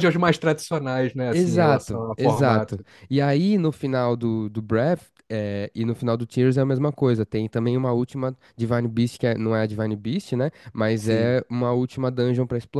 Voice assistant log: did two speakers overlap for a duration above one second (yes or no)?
yes